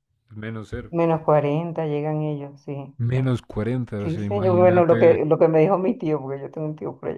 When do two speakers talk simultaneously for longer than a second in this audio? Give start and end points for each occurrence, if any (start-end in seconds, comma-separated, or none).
4.0-5.3